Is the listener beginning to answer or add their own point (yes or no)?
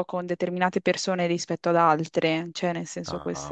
yes